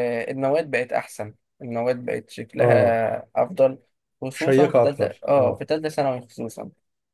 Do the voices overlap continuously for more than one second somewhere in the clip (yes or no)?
yes